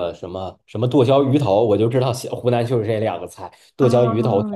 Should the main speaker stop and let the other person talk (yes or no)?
yes